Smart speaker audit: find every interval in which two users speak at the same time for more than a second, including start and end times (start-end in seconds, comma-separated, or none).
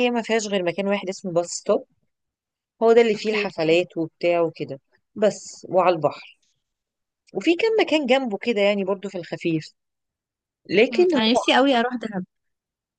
none